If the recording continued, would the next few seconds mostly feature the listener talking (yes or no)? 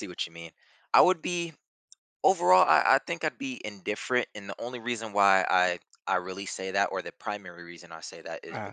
no